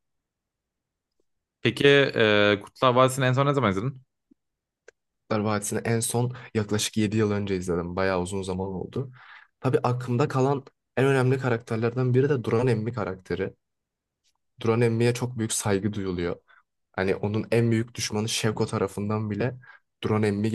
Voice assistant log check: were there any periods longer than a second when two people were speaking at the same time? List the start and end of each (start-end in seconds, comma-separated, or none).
none